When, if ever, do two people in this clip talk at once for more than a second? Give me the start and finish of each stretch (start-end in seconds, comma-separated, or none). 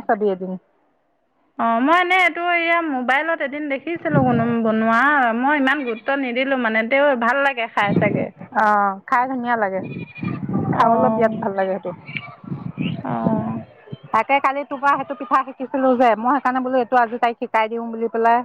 none